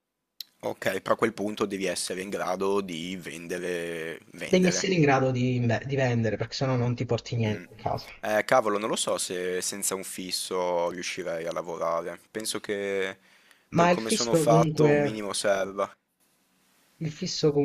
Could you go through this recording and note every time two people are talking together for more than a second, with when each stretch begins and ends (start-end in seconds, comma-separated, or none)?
13.7-15.3